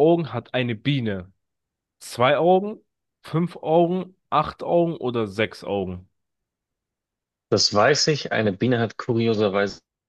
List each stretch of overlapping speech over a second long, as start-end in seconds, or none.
none